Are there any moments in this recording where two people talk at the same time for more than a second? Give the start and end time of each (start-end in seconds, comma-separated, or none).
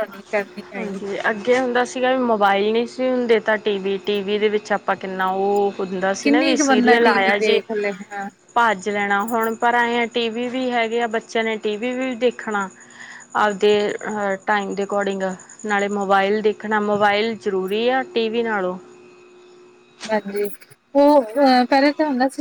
6.2-7.6